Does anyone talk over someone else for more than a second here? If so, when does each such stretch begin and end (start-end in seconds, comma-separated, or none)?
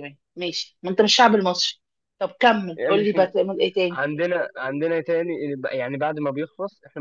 none